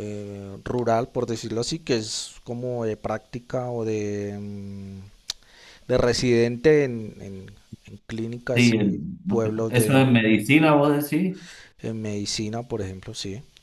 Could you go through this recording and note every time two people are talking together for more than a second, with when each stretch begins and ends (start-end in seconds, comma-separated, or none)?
8.5-10.1